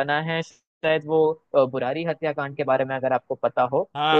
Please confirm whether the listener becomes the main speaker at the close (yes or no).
yes